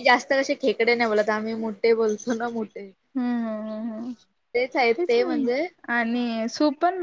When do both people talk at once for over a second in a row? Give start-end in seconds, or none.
5.0-6.2